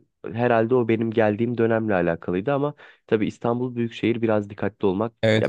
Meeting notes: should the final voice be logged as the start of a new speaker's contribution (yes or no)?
yes